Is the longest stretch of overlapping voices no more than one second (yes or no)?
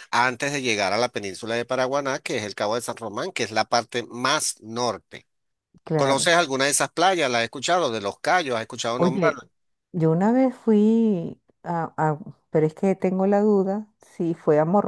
yes